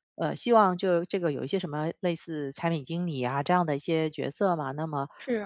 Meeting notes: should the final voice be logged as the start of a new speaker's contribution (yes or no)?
no